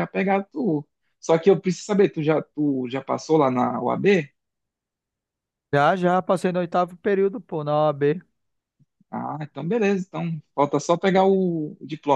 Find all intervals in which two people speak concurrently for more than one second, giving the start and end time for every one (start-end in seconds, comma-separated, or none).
none